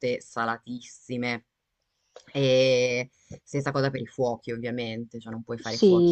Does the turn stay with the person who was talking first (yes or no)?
no